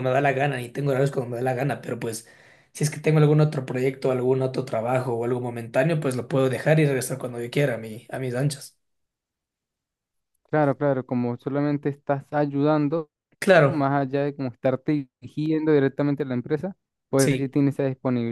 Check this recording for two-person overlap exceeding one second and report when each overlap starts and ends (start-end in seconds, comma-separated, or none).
none